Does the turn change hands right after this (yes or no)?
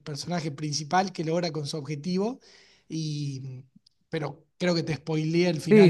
yes